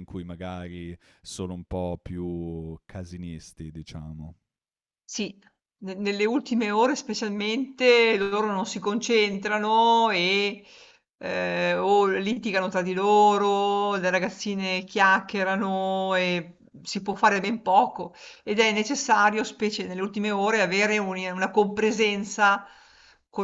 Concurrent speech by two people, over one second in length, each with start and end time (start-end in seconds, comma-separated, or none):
none